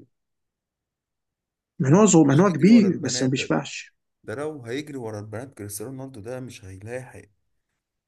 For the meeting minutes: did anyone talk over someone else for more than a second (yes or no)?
yes